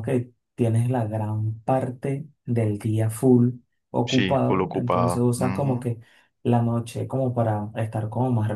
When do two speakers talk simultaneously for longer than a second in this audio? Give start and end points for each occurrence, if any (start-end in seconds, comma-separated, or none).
4.0-5.9